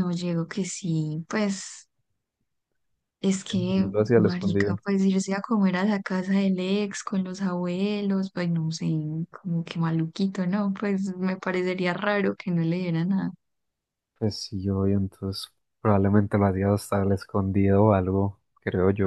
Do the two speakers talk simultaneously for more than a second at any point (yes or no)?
yes